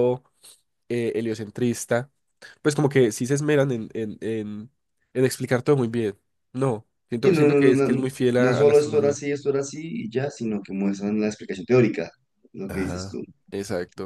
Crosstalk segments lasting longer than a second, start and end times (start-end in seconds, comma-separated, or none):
7.2-9.2